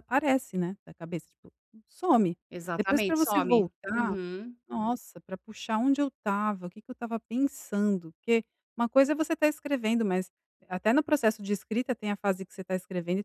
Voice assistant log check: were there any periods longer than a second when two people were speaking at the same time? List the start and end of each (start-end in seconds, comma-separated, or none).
2.8-4.1